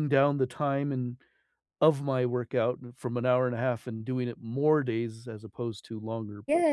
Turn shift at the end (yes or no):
yes